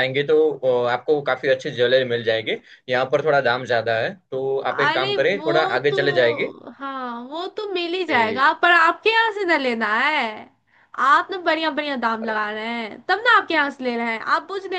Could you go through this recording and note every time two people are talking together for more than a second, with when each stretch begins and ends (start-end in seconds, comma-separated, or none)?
4.7-6.5